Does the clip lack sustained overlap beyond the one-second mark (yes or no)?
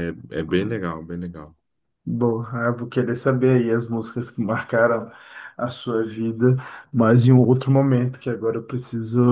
yes